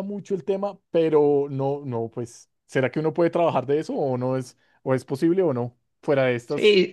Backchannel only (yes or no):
no